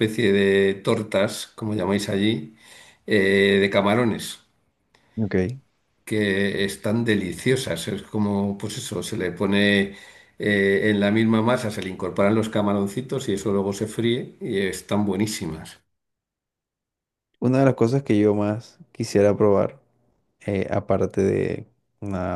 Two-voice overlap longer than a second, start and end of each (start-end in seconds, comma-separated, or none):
none